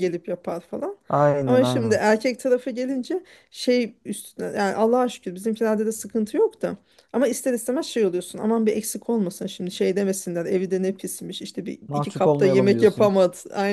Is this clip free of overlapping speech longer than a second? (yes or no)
no